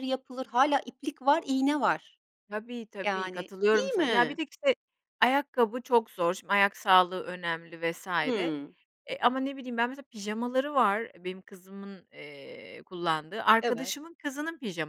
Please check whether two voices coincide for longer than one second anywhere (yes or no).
yes